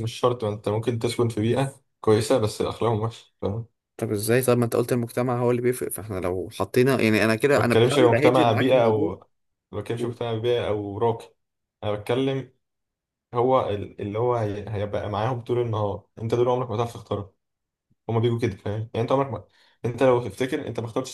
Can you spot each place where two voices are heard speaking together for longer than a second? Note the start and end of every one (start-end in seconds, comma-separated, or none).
7.6-9.2